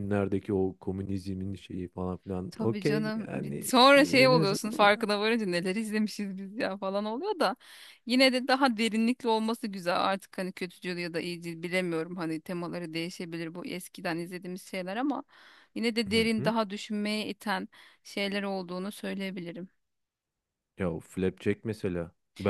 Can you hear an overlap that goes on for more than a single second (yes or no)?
yes